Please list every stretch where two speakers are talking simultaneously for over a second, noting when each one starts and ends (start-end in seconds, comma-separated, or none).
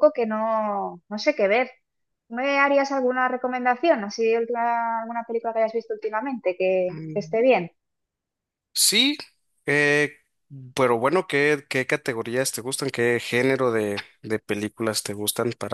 none